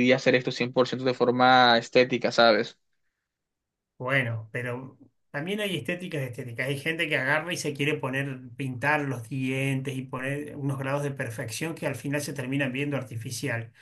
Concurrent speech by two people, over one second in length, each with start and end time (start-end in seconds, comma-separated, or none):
none